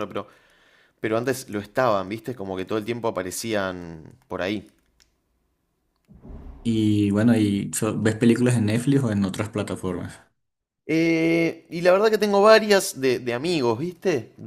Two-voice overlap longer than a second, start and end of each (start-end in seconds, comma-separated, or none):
none